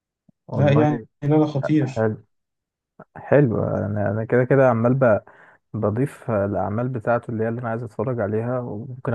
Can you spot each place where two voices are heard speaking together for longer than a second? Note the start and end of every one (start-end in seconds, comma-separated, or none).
none